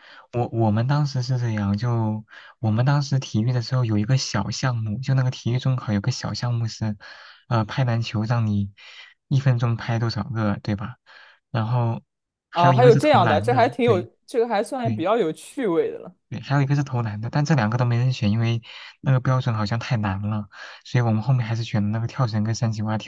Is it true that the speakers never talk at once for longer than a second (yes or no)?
no